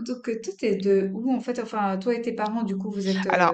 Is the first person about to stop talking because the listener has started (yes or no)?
yes